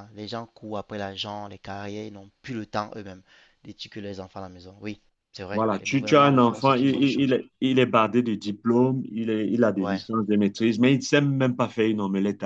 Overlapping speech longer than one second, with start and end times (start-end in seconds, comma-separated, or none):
5.5-7.3